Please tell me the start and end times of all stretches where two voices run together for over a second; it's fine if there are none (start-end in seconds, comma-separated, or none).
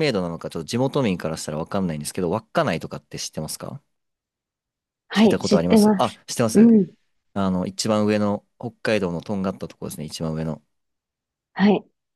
5.1-6.7